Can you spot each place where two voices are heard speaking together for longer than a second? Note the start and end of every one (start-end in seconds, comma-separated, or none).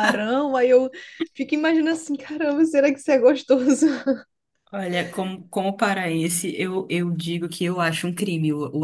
none